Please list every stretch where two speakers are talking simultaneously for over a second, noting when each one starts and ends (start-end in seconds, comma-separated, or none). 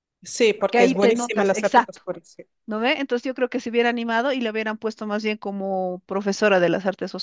0.6-2.0